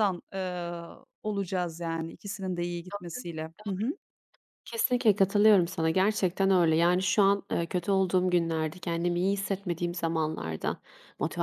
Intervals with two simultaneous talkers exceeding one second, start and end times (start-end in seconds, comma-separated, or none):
none